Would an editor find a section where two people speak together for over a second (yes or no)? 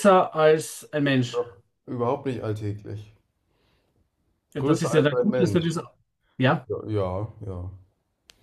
yes